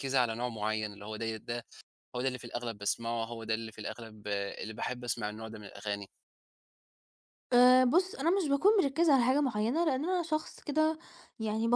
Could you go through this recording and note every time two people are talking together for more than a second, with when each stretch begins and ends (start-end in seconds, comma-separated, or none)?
none